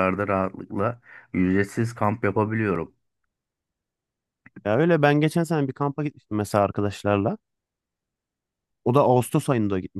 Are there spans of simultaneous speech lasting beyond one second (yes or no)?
no